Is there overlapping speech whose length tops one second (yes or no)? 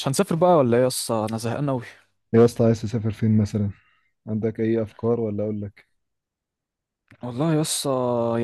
no